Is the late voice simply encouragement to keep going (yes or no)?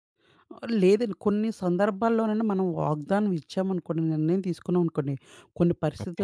yes